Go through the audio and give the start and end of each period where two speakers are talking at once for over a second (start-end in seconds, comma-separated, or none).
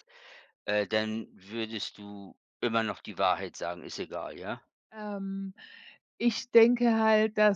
none